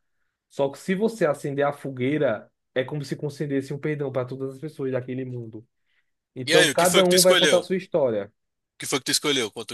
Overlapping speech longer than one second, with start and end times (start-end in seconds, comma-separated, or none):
6.5-7.7